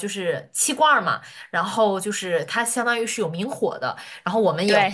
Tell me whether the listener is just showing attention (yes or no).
yes